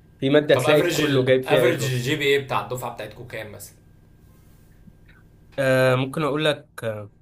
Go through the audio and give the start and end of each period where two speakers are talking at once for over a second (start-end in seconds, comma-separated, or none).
0.5-2.1